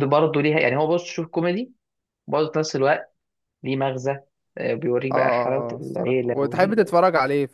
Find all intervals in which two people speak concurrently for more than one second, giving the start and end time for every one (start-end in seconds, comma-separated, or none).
5.1-6.9